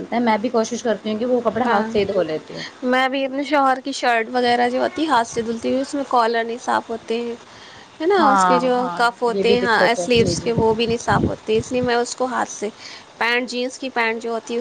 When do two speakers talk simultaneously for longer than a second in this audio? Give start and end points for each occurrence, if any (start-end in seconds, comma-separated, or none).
8.2-10.5